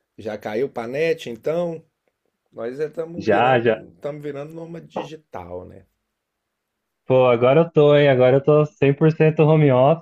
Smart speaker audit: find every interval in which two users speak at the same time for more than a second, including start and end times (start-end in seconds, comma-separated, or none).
none